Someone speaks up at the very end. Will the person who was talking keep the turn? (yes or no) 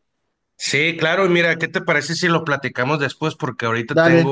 yes